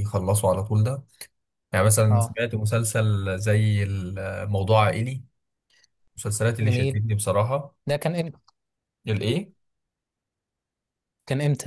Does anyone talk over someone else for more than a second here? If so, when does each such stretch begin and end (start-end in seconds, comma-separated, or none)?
none